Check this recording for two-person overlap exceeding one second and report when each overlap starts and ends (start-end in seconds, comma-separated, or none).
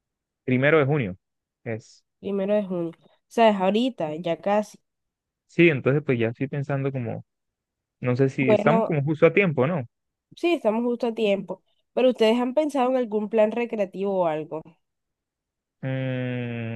none